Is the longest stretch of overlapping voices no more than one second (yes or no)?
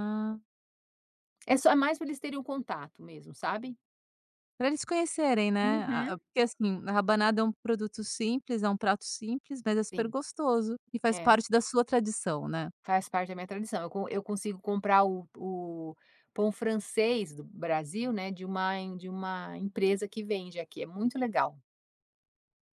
yes